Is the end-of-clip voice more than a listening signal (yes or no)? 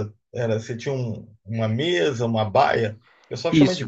yes